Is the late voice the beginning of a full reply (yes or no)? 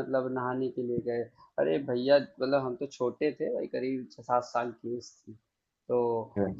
no